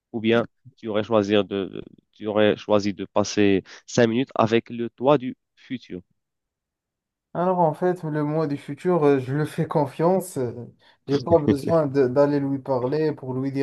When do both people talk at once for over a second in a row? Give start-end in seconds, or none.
none